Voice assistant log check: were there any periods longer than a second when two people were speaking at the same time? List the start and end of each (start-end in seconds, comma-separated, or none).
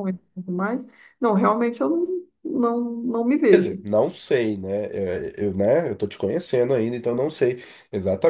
none